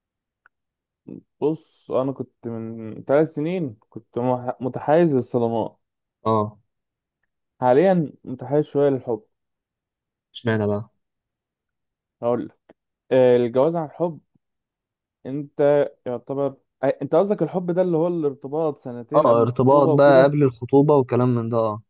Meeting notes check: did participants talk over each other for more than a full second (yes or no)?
yes